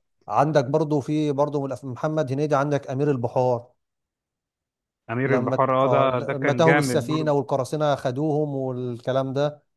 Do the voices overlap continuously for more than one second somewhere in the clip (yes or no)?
yes